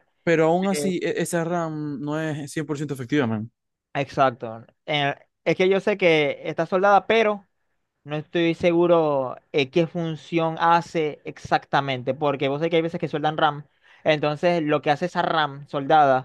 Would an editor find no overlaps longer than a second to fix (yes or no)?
yes